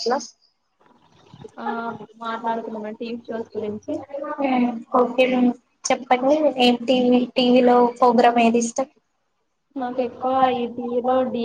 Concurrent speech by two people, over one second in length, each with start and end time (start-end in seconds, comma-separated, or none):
none